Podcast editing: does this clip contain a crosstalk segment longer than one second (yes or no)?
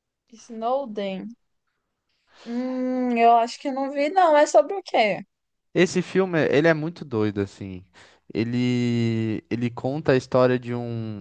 no